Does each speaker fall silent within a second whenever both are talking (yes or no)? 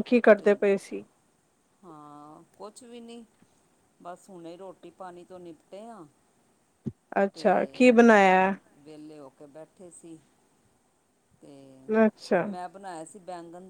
yes